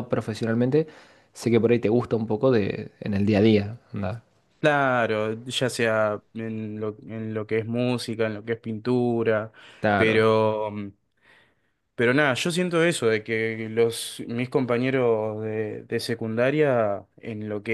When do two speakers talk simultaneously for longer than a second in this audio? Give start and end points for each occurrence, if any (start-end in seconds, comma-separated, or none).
none